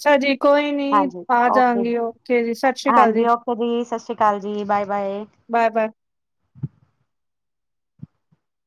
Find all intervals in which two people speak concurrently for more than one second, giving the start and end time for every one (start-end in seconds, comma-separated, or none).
none